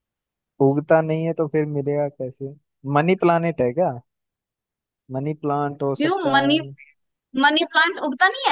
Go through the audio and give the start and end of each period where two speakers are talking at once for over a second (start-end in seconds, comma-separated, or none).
none